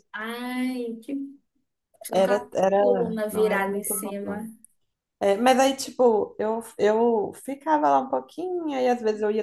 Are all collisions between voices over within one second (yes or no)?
no